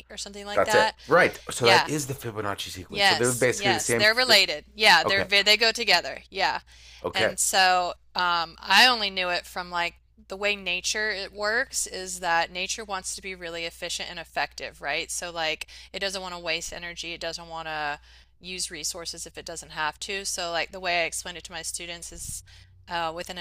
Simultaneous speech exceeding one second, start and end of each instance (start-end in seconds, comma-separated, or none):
2.9-4.4